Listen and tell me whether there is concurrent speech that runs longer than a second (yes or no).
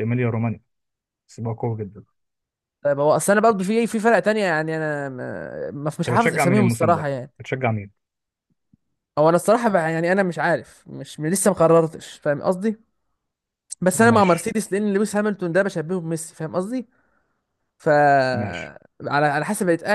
yes